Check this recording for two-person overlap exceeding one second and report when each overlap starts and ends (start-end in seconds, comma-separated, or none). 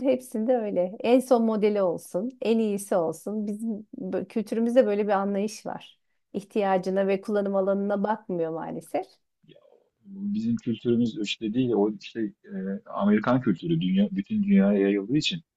none